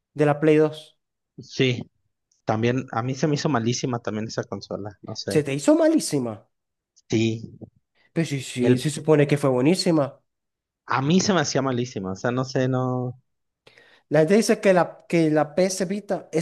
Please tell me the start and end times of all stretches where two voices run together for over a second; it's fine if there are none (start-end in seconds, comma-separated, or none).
none